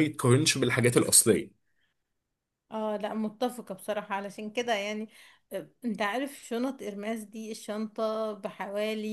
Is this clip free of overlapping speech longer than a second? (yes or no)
yes